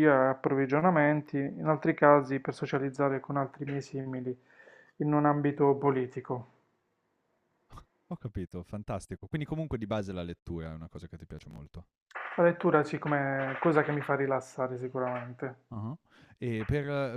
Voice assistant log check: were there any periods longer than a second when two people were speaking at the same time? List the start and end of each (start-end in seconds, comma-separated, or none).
none